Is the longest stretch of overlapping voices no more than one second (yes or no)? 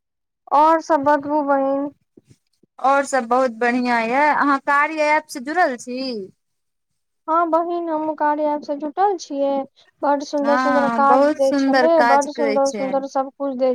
no